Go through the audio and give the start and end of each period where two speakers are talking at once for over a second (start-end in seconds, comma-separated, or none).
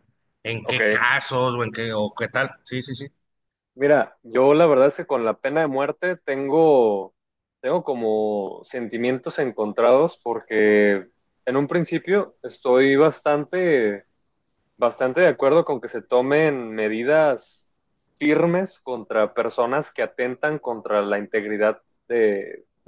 none